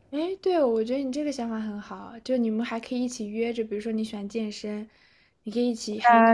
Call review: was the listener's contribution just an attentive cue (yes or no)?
no